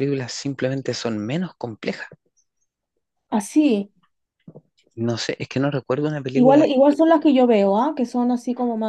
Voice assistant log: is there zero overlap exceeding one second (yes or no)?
yes